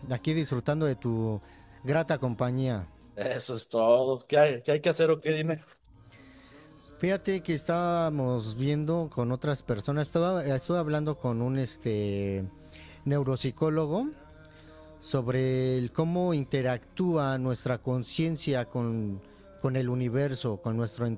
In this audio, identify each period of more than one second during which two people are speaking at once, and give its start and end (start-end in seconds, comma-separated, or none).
none